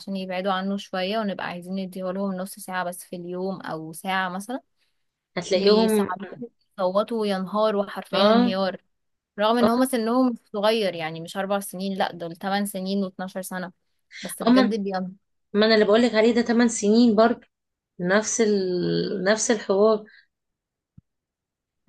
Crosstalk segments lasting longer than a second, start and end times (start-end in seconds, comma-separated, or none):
none